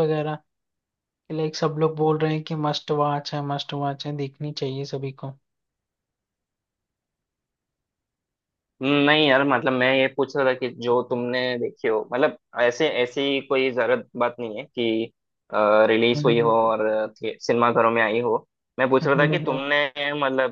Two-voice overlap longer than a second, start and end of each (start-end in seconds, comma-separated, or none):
none